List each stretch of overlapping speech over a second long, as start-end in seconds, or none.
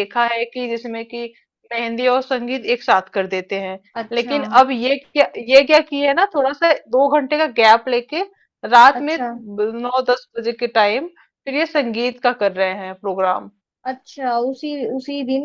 none